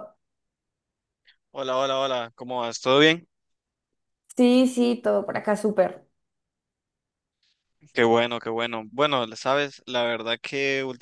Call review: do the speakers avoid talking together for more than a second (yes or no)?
yes